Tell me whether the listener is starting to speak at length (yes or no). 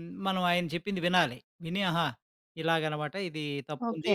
yes